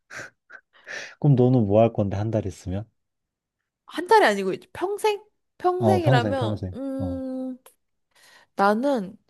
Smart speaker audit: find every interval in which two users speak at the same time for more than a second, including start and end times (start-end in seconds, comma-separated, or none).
5.8-7.2